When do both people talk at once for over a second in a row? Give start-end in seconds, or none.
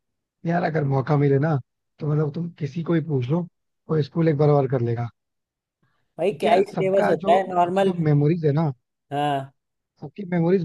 6.3-7.9